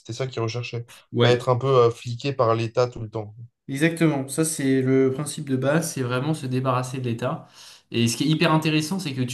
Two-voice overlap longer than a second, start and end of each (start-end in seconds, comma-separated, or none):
none